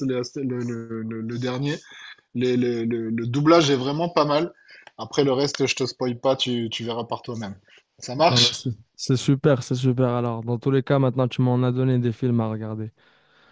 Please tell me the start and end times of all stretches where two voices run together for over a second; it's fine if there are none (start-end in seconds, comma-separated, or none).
none